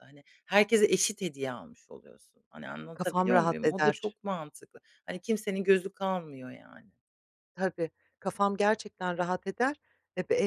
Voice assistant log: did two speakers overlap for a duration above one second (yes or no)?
yes